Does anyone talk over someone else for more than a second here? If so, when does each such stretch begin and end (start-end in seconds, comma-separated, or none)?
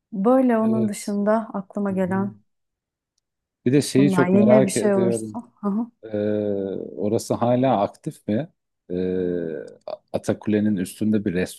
4.0-5.4